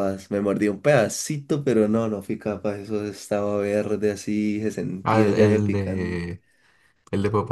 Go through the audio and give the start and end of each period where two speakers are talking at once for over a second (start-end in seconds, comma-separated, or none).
5.0-6.3